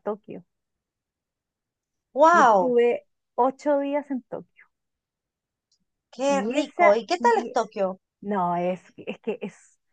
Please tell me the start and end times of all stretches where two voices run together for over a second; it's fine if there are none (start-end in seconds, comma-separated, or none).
6.2-7.6